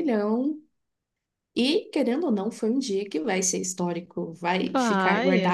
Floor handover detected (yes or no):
no